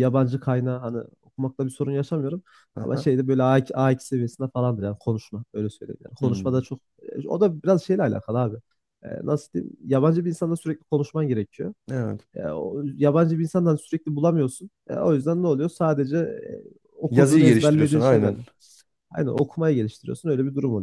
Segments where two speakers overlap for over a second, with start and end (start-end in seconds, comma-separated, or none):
17.1-18.4